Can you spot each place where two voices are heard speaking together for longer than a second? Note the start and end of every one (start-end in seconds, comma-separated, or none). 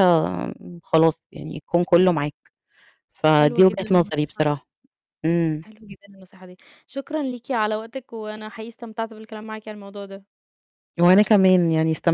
3.3-4.6